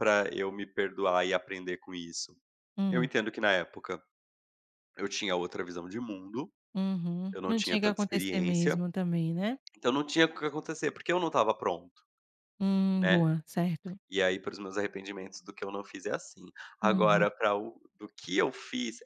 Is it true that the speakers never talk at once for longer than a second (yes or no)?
no